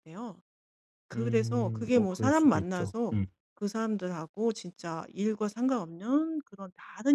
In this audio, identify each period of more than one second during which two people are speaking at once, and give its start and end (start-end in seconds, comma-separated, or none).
1.1-3.2